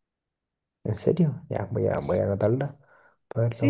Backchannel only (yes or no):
no